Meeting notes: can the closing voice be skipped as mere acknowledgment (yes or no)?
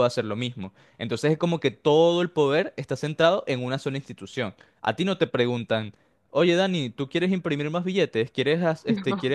yes